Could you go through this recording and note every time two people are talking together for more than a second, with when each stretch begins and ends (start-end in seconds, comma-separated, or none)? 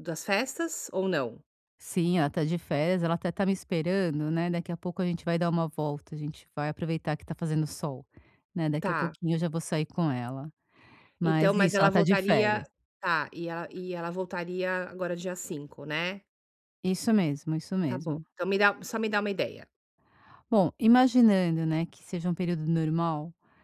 11.2-12.7